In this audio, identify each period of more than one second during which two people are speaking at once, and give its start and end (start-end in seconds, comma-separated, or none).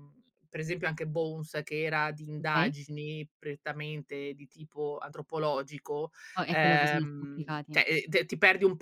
6.5-7.8